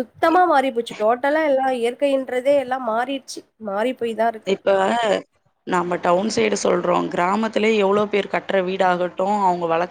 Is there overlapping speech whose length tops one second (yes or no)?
no